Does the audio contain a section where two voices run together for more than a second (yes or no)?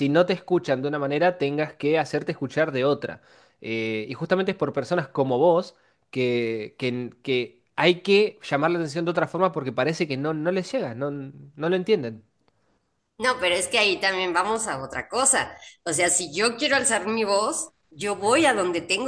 no